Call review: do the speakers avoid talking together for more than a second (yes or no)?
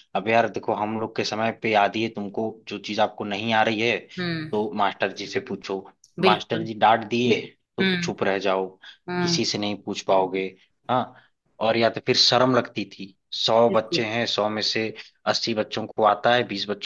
yes